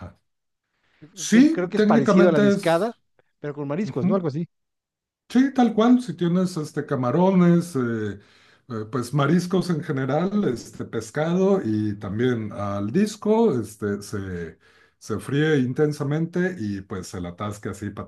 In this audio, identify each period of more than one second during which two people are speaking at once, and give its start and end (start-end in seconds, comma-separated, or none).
1.3-2.9